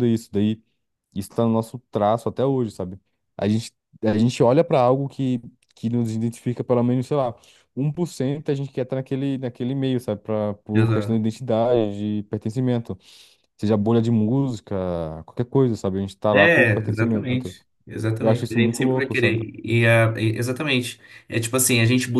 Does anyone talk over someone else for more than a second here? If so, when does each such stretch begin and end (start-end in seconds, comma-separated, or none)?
16.3-17.6, 18.2-19.4